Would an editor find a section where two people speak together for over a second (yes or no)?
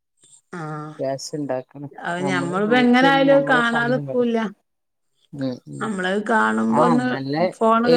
yes